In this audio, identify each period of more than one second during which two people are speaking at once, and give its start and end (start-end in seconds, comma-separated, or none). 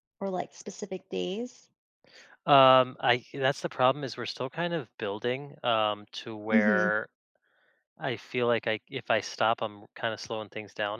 none